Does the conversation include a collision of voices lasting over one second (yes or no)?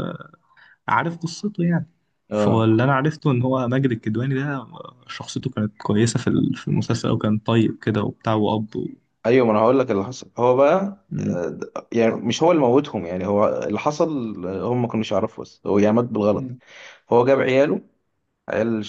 no